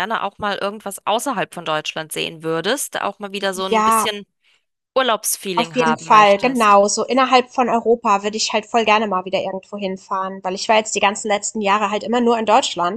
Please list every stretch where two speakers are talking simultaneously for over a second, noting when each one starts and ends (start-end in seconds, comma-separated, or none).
5.5-6.8